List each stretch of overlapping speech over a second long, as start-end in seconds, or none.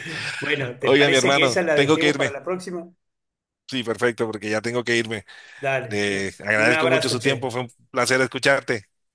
0.8-2.4, 5.9-7.5